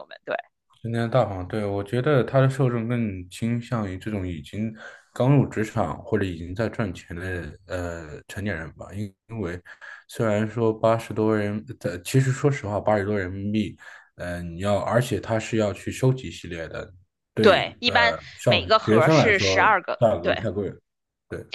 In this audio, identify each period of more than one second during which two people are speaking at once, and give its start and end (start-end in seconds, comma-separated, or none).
17.4-20.4